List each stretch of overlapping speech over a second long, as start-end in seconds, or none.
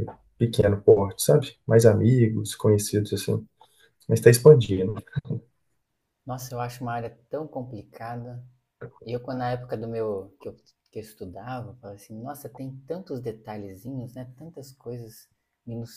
none